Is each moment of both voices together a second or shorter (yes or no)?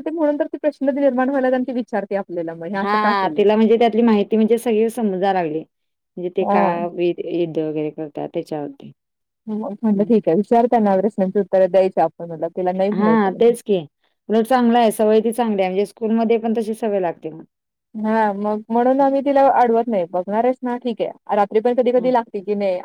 yes